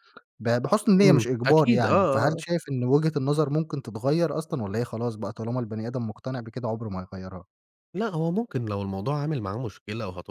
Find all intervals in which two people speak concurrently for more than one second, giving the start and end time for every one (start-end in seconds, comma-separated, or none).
1.0-2.4